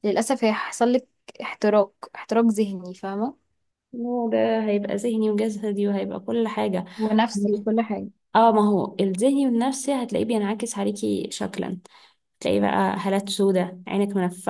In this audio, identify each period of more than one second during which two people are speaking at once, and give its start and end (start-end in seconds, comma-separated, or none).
none